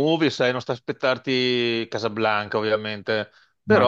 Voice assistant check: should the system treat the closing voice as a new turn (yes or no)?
no